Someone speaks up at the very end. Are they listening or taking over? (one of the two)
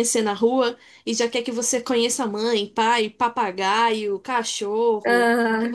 listening